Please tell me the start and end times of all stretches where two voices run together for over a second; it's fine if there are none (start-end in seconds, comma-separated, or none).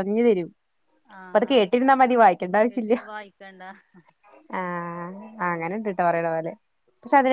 none